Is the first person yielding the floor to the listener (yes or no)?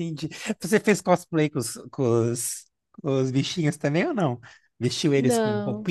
no